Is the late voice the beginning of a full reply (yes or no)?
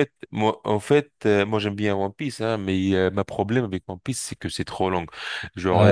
no